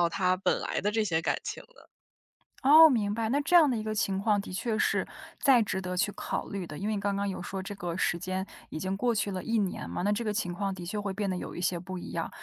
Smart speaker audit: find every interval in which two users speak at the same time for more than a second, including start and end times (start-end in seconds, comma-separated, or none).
none